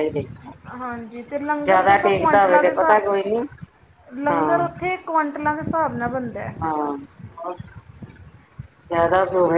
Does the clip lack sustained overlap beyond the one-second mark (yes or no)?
no